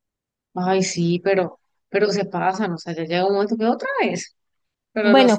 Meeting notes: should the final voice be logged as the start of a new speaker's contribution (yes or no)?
yes